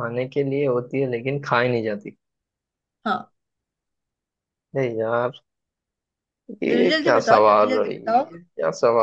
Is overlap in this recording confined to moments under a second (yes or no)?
no